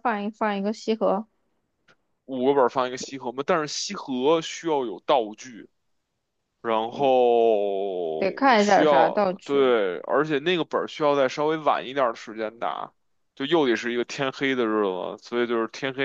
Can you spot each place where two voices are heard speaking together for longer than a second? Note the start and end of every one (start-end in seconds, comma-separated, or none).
8.2-9.7